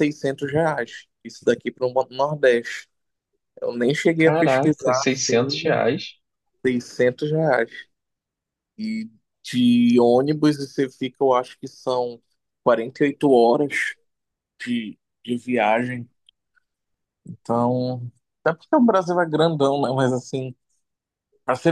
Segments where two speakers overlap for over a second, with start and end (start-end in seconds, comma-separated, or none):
4.2-5.8